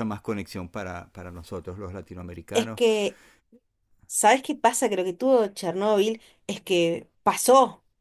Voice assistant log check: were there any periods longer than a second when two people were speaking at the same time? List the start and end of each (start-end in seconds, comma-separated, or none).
none